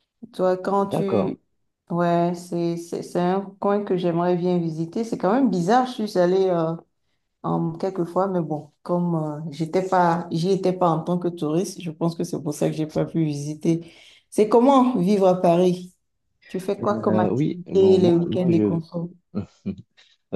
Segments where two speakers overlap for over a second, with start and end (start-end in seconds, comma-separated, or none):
16.8-18.8